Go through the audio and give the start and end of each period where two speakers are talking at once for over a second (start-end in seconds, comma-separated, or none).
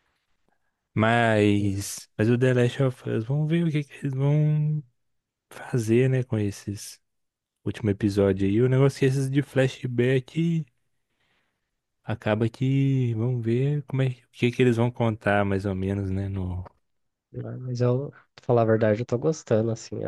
none